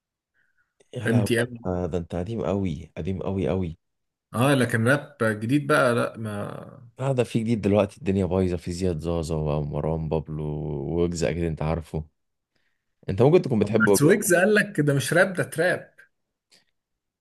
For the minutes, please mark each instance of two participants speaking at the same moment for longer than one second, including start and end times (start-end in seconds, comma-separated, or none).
none